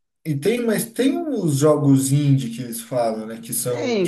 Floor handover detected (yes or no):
yes